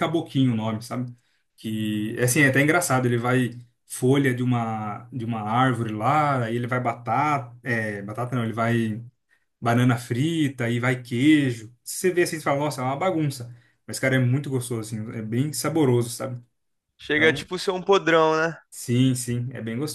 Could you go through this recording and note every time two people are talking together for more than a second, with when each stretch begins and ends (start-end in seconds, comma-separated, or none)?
none